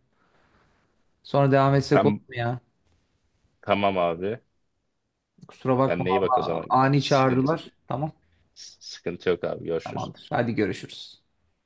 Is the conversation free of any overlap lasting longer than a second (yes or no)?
no